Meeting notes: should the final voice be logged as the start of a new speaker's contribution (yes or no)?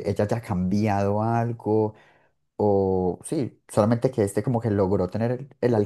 no